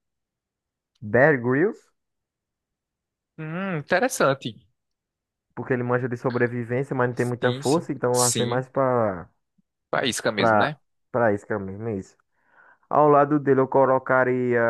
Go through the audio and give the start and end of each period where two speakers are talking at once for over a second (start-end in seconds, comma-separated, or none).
7.1-8.6